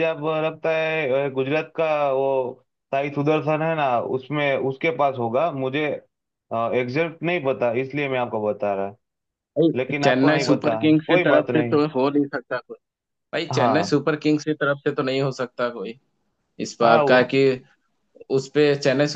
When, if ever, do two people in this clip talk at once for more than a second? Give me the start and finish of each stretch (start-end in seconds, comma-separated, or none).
9.8-11.8